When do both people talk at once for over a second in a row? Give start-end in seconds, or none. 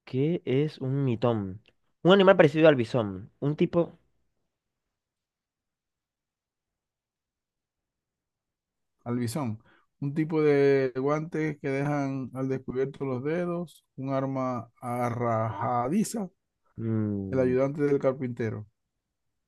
none